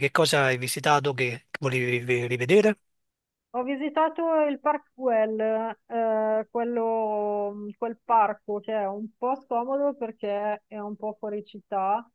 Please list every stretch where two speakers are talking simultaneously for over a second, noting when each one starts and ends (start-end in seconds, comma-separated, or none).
none